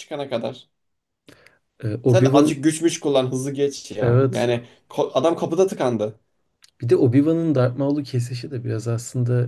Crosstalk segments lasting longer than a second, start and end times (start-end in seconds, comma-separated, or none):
none